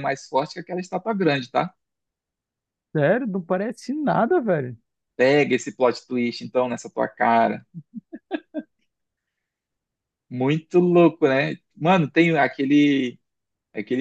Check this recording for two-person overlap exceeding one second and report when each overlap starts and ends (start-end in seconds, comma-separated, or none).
none